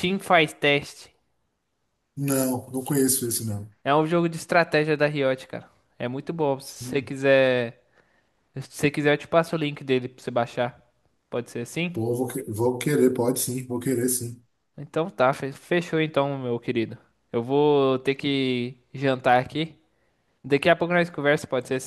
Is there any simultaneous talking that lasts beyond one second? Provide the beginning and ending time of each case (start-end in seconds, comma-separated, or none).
none